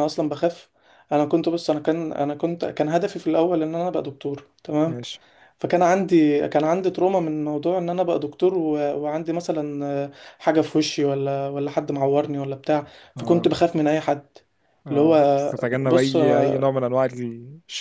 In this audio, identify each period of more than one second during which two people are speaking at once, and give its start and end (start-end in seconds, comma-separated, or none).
14.9-16.7